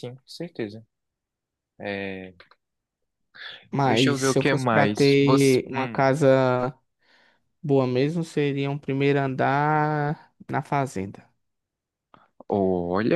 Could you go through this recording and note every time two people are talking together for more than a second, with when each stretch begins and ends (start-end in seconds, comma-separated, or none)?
3.9-6.0